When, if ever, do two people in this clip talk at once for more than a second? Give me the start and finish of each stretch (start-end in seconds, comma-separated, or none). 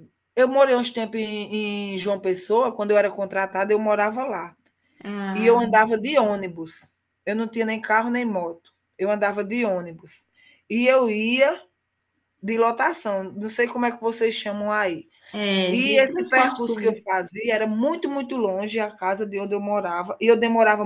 15.7-17.1